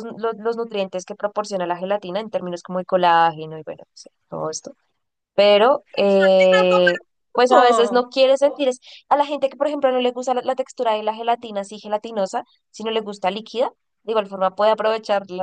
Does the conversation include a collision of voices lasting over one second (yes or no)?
yes